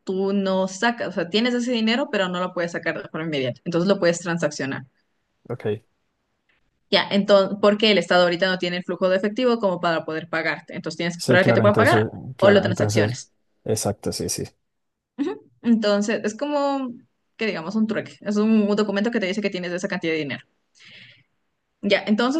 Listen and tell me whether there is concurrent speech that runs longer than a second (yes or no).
yes